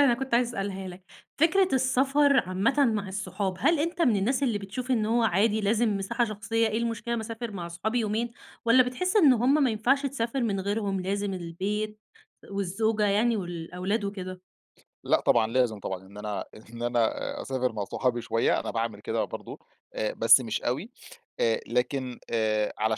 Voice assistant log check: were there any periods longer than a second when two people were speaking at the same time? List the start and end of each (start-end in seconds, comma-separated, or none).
none